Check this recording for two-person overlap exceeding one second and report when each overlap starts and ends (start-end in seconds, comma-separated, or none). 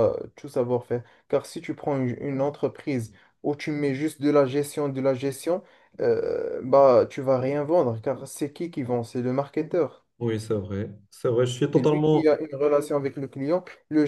none